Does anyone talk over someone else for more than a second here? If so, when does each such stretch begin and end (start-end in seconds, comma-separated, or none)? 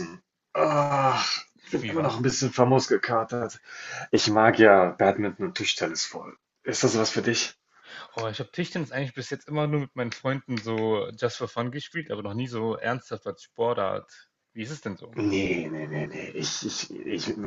none